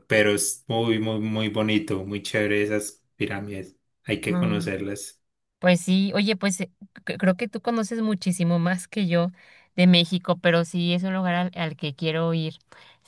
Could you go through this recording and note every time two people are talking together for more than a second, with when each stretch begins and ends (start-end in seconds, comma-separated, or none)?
none